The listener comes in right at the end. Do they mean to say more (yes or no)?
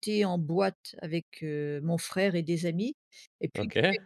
no